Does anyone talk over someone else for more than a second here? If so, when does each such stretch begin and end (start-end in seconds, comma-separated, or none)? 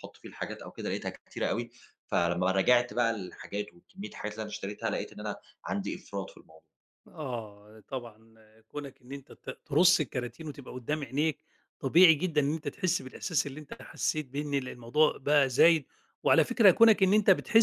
none